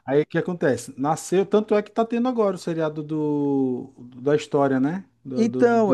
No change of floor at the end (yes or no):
no